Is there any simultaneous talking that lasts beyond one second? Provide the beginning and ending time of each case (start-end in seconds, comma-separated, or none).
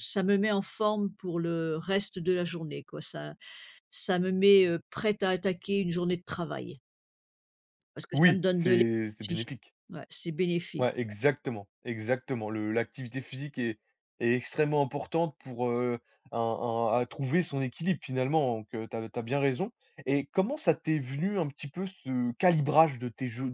8.1-9.4